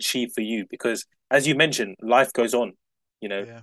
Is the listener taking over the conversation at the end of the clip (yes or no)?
no